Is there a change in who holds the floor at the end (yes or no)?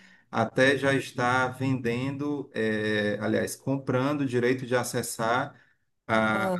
no